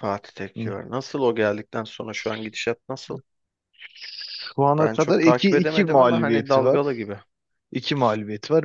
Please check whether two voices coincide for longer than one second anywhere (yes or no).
yes